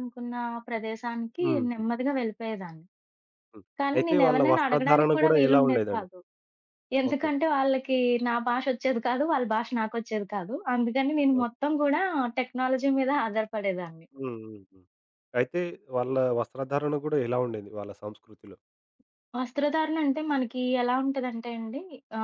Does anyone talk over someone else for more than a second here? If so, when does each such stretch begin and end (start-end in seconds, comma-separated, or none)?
3.8-6.1